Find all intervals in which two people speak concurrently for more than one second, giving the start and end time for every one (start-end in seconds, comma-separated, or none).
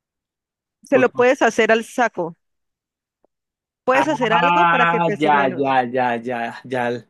3.9-5.8